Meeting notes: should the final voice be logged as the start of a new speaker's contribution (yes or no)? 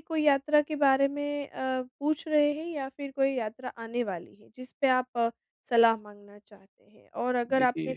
no